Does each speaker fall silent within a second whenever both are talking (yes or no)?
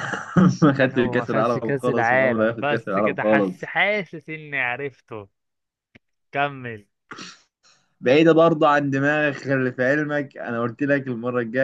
no